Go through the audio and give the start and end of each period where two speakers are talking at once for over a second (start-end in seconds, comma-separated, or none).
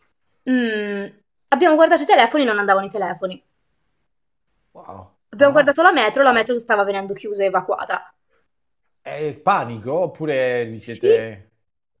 none